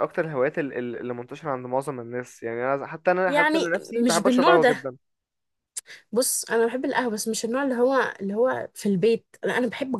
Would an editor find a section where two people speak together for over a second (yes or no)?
yes